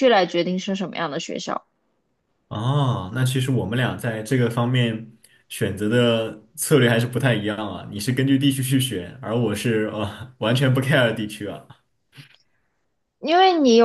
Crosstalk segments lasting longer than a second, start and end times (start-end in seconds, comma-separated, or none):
none